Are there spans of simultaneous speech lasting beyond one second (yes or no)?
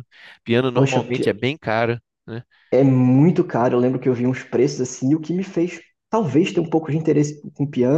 no